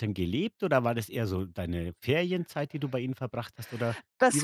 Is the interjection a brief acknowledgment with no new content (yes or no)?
no